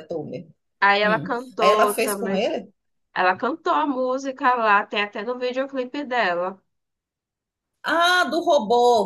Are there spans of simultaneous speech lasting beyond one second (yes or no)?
yes